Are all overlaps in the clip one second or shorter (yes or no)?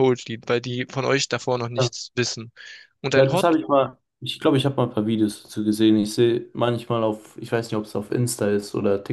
yes